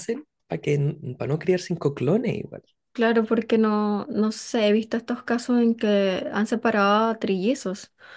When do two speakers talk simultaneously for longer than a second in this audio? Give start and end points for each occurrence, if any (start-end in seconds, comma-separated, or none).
none